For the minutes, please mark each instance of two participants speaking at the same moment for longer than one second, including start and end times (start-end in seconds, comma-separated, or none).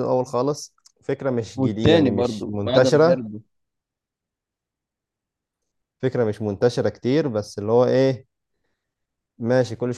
1.6-3.2